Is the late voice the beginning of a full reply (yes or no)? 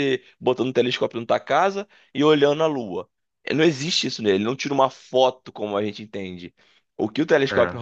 no